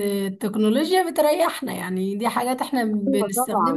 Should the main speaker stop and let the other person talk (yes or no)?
yes